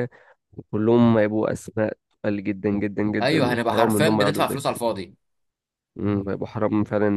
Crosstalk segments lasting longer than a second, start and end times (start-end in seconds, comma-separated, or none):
3.2-4.8